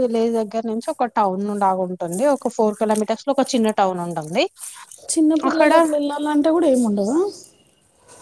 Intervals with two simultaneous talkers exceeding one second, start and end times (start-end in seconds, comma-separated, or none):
none